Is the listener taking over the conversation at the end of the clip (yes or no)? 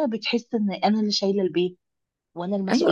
yes